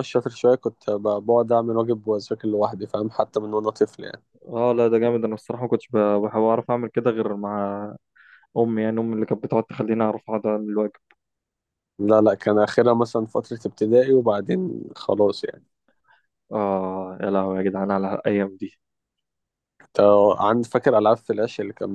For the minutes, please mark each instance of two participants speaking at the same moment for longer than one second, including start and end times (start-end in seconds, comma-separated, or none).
none